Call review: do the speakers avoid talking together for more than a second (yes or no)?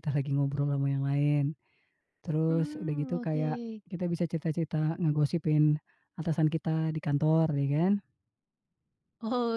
no